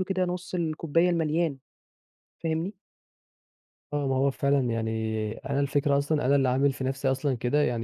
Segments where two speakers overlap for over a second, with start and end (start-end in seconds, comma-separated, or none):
none